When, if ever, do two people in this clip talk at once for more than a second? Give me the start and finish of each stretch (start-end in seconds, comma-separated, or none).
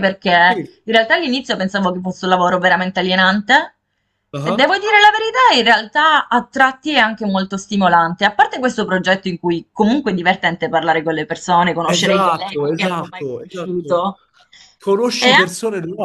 11.8-14.1